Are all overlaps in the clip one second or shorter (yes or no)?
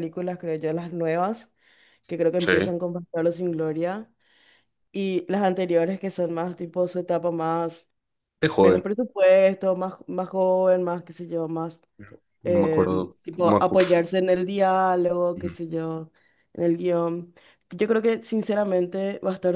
no